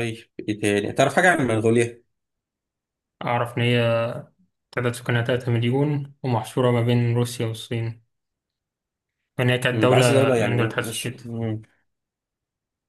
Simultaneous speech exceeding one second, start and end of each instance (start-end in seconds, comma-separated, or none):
9.7-11.2